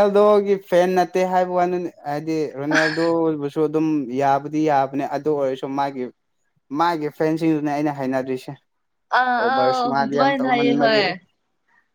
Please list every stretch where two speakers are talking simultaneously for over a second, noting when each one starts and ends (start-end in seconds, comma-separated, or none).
9.4-11.0